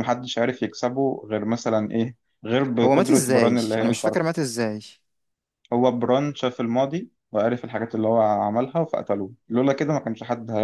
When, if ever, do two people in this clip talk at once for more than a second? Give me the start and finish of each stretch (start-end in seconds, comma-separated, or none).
2.8-4.3